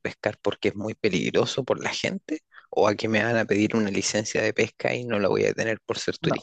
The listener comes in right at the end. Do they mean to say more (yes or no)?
yes